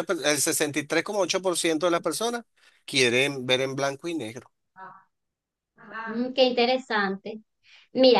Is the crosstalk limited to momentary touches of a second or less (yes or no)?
yes